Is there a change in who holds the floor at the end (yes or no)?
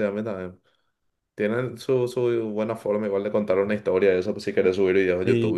no